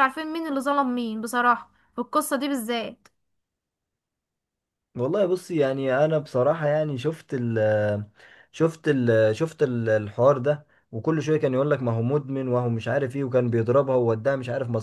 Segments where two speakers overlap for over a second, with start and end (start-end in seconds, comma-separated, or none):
none